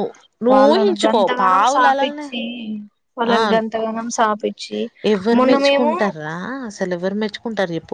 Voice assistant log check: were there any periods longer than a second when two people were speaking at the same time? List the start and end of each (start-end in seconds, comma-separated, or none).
0.5-2.3